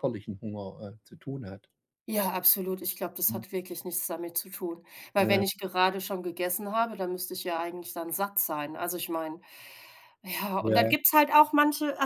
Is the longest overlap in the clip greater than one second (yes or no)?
no